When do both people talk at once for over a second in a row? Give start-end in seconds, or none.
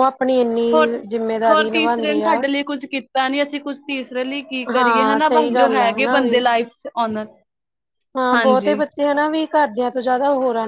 4.7-6.4